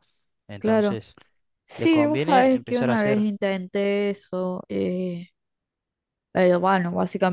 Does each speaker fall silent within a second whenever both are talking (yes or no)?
no